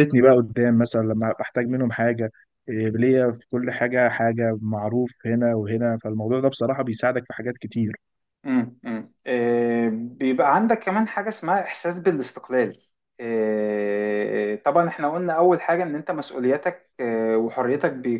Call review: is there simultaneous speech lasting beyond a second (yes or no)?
no